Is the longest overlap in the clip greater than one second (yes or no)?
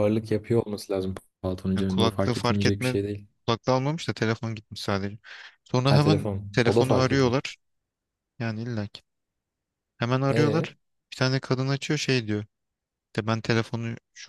yes